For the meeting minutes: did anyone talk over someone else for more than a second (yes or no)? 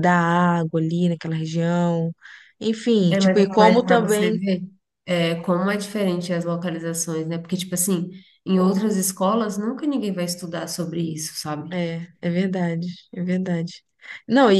yes